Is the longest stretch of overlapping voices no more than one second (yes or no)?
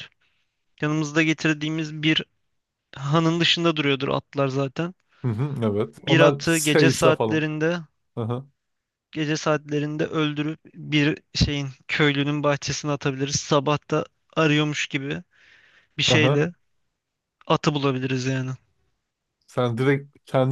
no